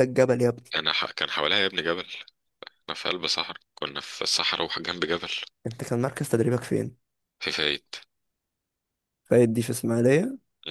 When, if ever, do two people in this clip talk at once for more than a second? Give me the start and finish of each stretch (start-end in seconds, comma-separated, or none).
none